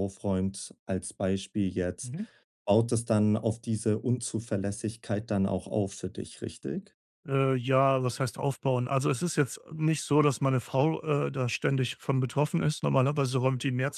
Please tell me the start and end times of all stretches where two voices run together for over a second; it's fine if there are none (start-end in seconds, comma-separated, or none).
none